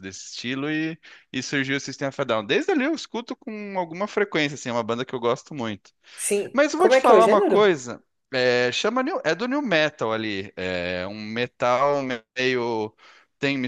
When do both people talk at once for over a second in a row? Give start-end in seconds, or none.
6.5-7.7